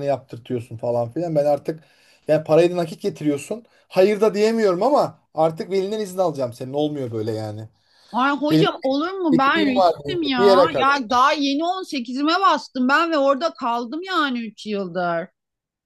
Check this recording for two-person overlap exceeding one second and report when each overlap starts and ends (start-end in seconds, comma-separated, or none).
9.3-10.9